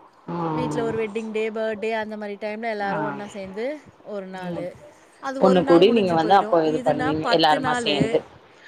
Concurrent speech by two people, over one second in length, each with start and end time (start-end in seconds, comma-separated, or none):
5.5-8.0